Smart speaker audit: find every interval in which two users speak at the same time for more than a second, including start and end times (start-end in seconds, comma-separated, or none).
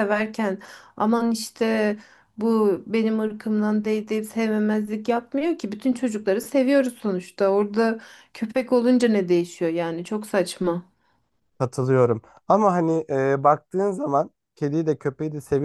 none